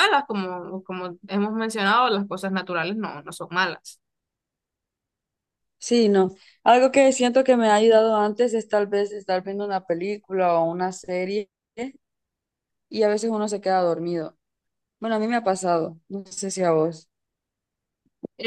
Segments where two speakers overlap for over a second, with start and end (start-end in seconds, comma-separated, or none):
none